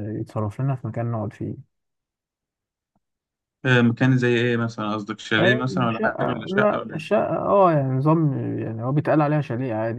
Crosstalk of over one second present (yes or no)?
yes